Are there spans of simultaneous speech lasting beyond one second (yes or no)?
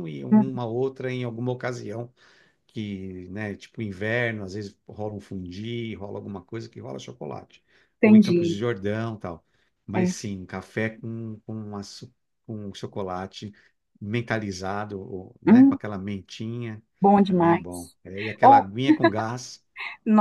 no